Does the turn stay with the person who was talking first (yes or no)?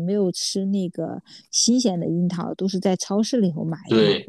no